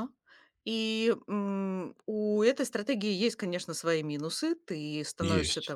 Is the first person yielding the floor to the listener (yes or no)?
no